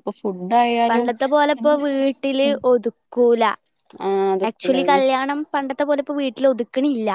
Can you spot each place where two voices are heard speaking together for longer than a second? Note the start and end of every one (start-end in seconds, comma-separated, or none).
none